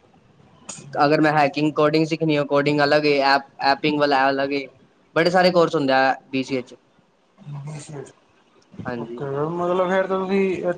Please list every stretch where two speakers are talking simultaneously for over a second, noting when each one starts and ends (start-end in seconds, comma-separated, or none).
none